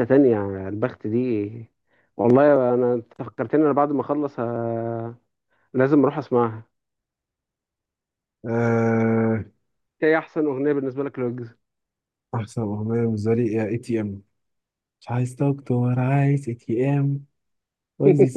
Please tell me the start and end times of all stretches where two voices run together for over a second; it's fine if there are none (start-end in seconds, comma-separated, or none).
none